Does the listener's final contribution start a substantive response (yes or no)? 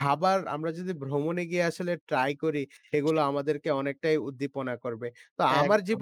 no